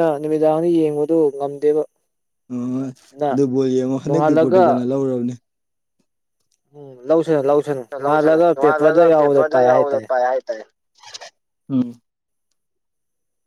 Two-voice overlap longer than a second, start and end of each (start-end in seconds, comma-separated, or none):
8.0-10.1